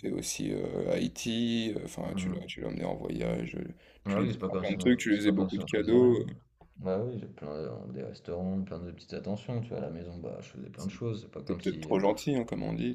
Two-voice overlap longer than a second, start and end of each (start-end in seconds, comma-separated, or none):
4.1-6.2